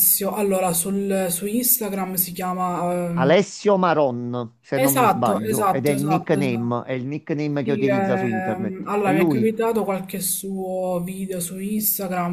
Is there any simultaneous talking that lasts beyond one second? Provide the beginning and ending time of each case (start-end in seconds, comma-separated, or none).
4.7-6.8, 7.6-9.5